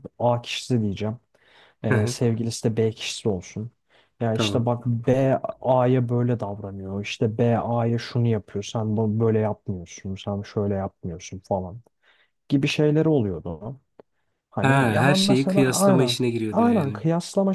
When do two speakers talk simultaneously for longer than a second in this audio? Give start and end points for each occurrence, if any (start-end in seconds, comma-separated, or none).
14.6-17.0